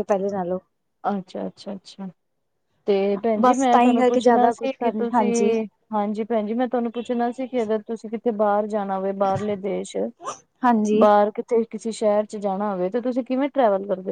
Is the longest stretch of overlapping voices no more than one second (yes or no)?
no